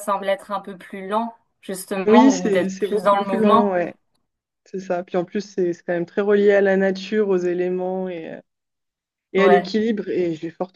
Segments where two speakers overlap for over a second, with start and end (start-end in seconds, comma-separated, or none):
2.0-3.7